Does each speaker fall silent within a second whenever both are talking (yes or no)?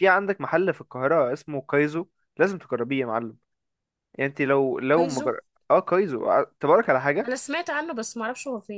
yes